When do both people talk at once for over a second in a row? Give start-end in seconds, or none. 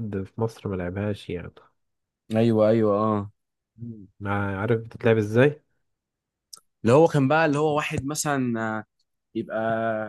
none